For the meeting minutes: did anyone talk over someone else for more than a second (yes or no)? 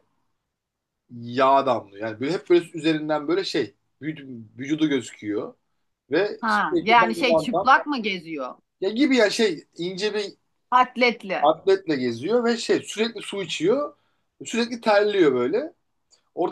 yes